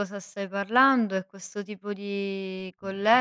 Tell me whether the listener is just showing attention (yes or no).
yes